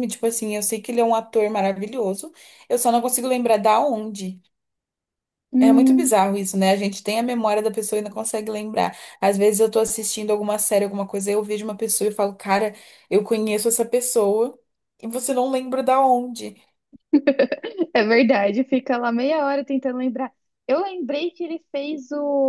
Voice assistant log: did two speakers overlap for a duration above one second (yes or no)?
no